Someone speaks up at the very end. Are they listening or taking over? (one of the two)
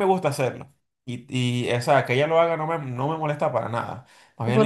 taking over